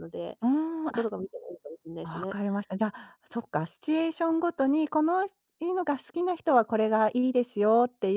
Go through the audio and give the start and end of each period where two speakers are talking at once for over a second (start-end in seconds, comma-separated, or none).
none